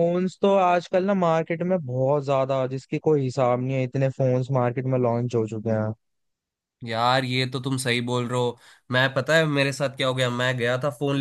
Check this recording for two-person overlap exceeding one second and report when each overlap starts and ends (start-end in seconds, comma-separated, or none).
none